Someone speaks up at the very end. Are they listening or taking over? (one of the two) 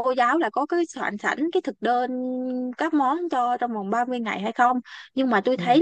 listening